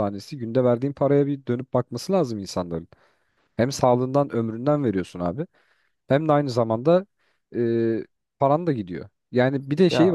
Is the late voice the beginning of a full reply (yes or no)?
no